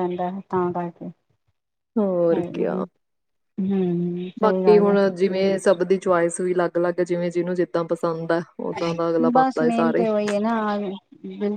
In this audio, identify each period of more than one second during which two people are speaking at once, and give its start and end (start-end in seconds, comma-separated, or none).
none